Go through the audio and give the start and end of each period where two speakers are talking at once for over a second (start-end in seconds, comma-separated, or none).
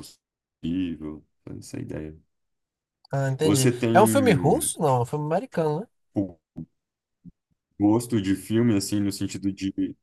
3.4-4.7